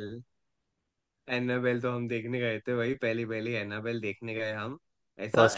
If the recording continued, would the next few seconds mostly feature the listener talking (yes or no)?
no